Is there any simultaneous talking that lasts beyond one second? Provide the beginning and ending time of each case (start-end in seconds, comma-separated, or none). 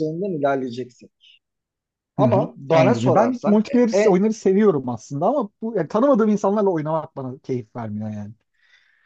2.2-4.2